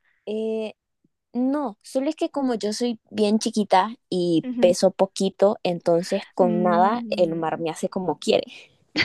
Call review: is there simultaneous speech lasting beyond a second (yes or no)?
yes